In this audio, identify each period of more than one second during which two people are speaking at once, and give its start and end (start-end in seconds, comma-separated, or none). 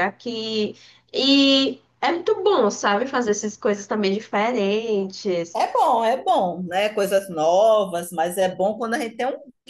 none